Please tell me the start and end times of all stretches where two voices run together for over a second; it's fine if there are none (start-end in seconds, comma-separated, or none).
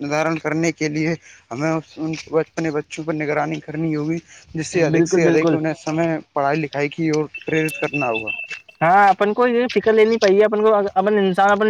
none